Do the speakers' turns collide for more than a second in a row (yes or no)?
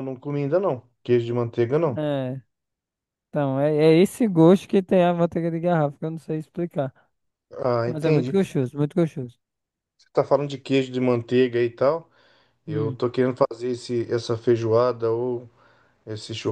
no